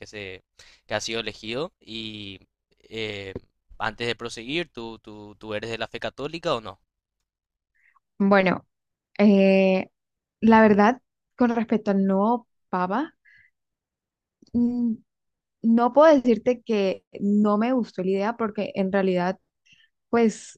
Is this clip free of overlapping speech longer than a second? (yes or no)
yes